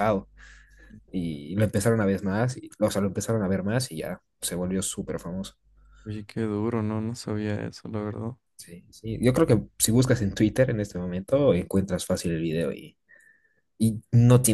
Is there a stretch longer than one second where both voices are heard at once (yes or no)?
no